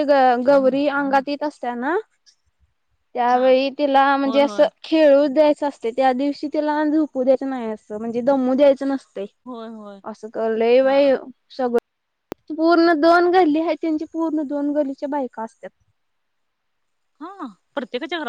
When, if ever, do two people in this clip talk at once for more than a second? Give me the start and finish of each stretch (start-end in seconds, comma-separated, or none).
none